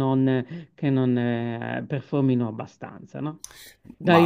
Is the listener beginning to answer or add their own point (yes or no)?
no